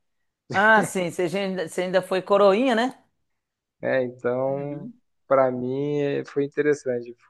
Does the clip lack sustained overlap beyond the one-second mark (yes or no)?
yes